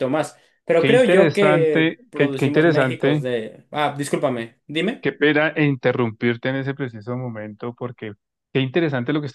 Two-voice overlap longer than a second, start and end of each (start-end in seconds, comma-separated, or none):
0.8-3.3